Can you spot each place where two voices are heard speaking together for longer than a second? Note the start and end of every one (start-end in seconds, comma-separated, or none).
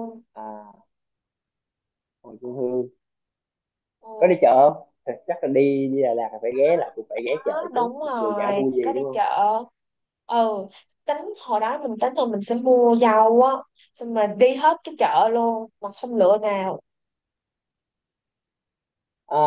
7.5-9.2